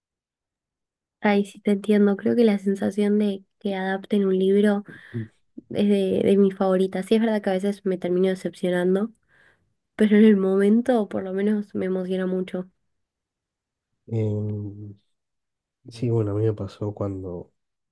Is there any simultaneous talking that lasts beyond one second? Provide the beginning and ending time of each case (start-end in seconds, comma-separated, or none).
none